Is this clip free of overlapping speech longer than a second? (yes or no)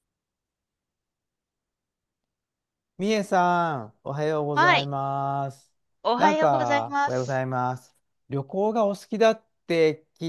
no